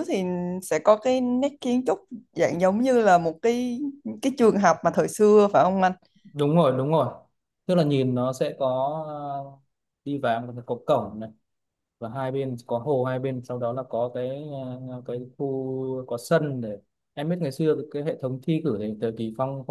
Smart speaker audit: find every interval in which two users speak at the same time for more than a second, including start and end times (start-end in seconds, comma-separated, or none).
none